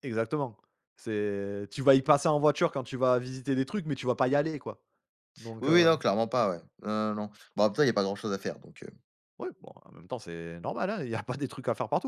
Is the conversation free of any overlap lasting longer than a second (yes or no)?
yes